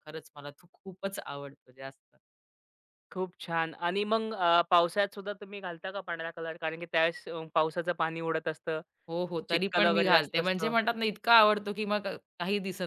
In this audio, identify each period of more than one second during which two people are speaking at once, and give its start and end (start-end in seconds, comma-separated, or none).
9.5-10.7